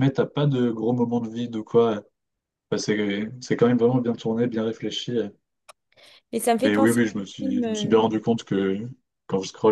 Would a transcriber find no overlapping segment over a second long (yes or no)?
no